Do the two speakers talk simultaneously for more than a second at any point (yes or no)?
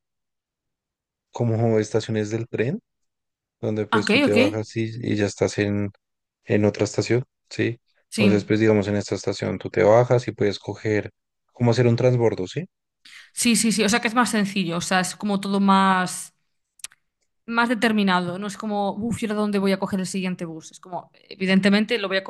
no